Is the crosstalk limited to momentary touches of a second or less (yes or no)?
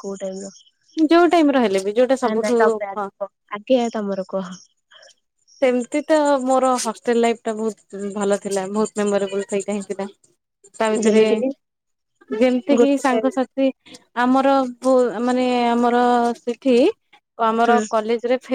yes